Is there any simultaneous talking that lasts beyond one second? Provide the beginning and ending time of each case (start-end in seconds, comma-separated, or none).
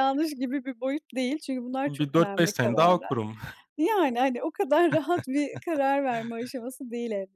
1.9-3.1